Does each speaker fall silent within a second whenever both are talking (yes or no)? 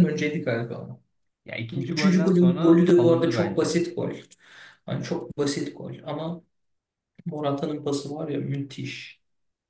no